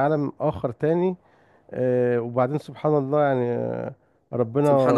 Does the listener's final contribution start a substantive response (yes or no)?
no